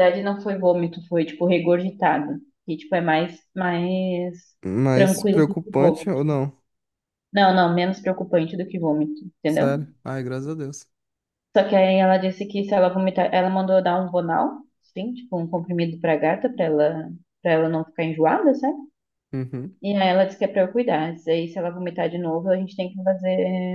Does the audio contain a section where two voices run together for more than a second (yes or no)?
yes